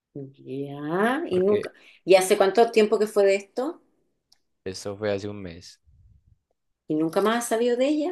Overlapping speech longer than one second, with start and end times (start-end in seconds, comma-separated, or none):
none